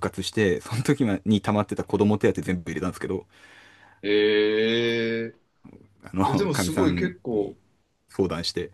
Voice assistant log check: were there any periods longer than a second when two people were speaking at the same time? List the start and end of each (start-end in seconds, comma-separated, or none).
6.3-7.5